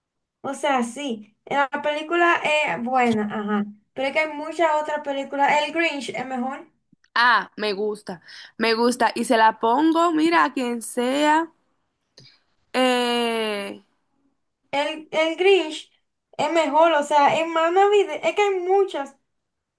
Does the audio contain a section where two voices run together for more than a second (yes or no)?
no